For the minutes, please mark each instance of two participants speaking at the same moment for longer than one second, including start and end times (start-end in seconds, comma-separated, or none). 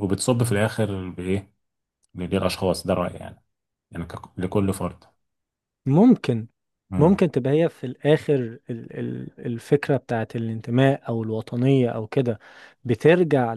none